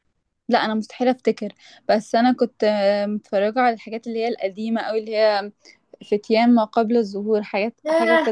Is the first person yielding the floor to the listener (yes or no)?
yes